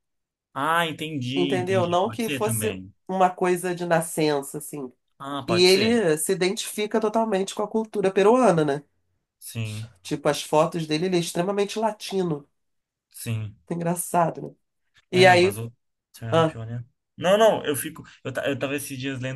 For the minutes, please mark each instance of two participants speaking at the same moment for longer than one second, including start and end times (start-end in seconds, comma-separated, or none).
1.4-2.9